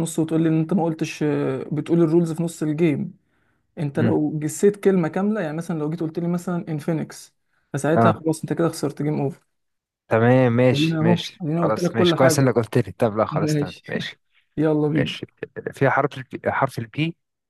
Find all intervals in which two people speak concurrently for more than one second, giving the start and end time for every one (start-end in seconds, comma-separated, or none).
10.7-12.6